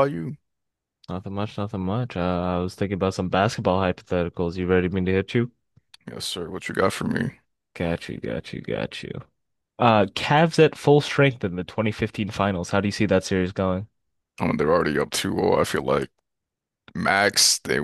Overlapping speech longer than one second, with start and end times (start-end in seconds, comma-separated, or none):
none